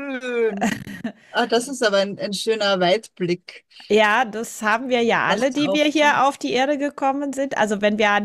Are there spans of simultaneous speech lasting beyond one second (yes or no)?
yes